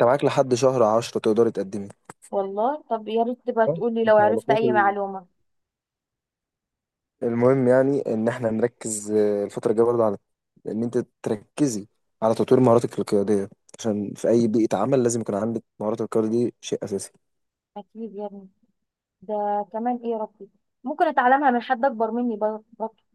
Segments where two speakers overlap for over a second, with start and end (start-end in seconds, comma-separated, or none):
3.7-4.9